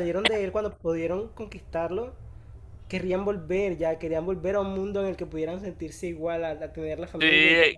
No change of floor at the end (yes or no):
no